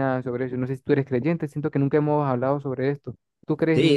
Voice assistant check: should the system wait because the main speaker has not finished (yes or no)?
no